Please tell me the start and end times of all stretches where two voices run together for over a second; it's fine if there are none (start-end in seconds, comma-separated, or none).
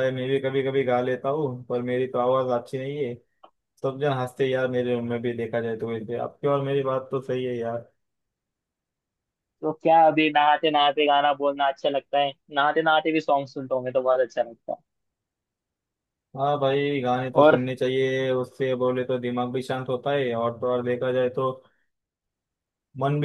none